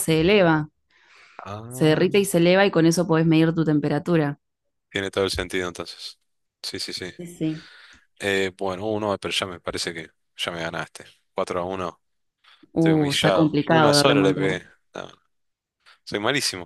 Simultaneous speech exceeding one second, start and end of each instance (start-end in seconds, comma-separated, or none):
12.8-14.5